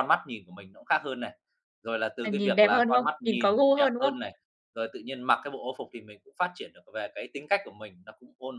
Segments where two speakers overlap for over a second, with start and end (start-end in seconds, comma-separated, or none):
2.2-4.1